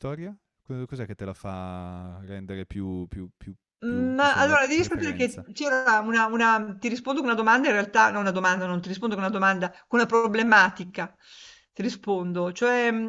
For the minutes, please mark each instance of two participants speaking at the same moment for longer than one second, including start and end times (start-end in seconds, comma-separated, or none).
3.8-5.5